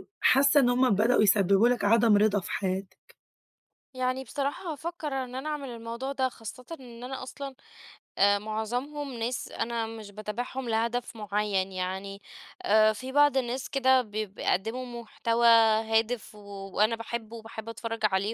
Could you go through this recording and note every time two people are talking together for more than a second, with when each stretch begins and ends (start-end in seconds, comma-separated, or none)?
none